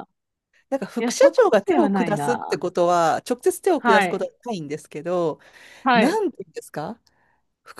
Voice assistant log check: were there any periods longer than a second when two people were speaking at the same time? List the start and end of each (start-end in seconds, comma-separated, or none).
1.0-2.6